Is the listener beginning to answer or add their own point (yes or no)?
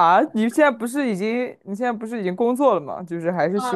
yes